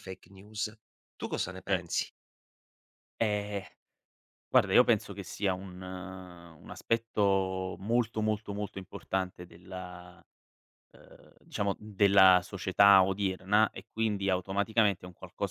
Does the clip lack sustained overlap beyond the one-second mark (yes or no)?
yes